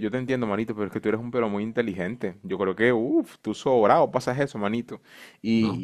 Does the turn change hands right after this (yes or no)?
no